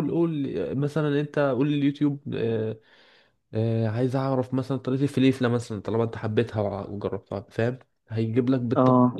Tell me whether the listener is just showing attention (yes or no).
yes